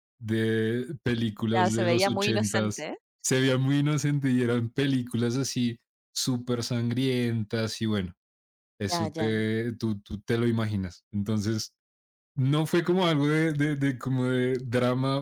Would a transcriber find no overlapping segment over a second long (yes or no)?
no